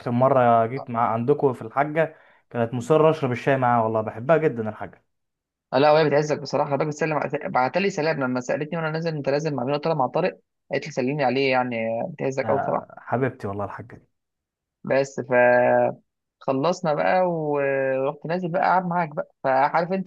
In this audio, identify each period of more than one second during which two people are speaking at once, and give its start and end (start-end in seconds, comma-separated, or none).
none